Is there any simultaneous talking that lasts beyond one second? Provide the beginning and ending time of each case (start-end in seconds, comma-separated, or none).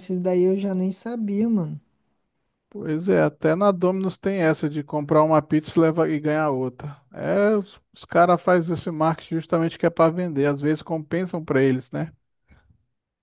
none